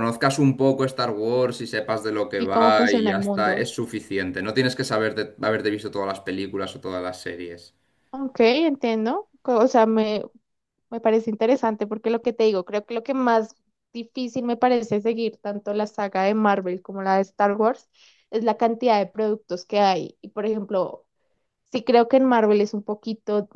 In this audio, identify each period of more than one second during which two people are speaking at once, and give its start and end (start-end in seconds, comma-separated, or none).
2.4-3.7